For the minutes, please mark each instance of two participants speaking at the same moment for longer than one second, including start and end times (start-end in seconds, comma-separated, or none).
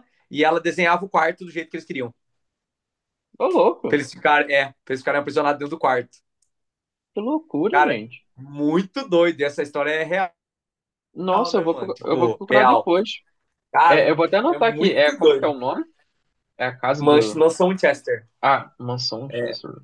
11.5-12.9, 13.9-15.5